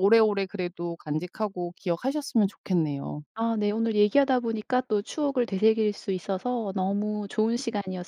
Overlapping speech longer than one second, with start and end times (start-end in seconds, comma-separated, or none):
none